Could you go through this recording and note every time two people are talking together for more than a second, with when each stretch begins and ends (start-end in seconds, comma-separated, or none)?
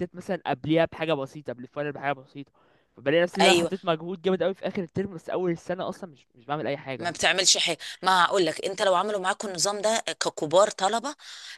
none